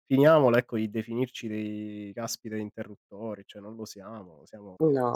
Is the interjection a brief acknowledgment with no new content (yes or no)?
no